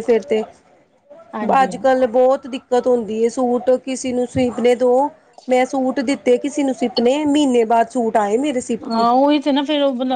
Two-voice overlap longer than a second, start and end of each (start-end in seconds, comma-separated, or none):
none